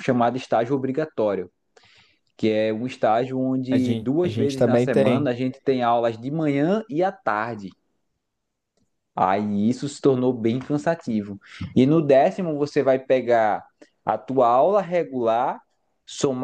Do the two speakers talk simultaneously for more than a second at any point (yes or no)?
yes